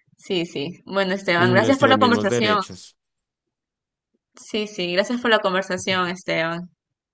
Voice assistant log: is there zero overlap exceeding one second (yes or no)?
no